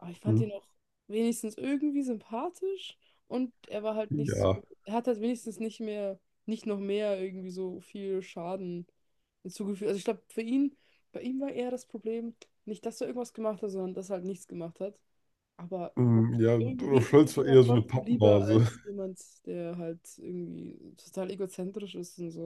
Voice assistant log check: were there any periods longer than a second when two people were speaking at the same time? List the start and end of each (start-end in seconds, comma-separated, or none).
16.6-18.7